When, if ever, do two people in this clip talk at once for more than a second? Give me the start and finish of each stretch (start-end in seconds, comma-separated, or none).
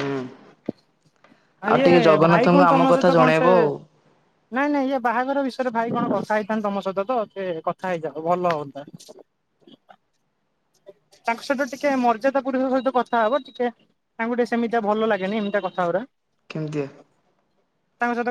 1.7-3.5